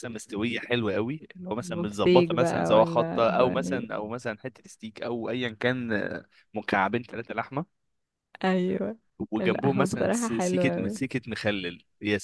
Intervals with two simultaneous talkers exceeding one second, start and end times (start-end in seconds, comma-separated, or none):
1.6-3.9, 9.4-10.9